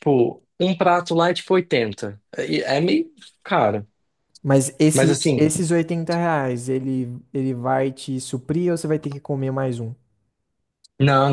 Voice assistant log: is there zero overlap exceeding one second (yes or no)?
yes